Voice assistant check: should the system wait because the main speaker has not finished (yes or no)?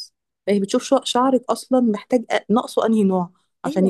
no